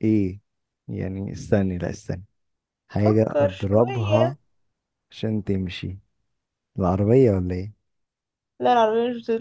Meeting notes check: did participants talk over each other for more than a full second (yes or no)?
yes